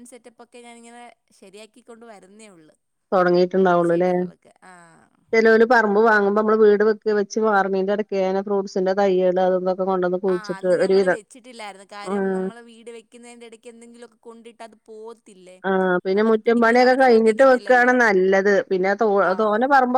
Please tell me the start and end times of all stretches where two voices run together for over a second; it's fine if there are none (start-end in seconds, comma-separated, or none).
16.2-17.9